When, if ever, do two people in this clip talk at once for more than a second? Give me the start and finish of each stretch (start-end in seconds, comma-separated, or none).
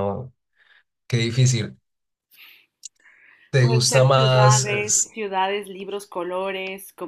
3.6-5.2